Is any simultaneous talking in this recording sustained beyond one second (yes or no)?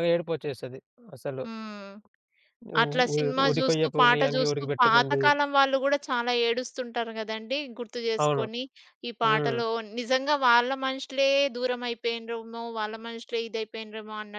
yes